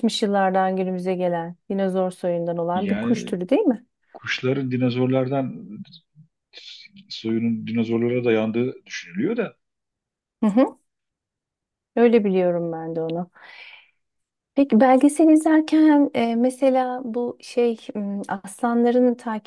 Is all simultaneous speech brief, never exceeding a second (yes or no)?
yes